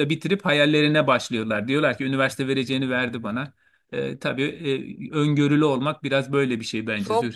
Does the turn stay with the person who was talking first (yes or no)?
no